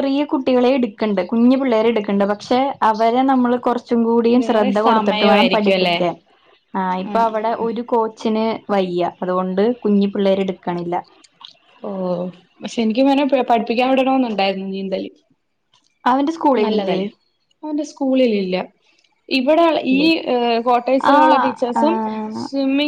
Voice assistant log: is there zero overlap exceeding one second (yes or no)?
no